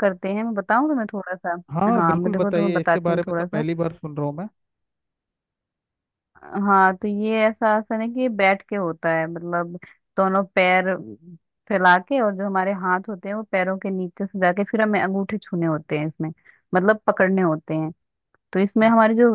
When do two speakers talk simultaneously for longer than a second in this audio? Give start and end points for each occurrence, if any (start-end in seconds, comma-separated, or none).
2.0-3.6